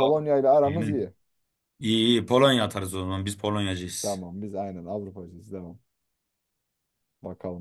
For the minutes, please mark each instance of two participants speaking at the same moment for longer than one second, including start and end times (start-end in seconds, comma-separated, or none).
none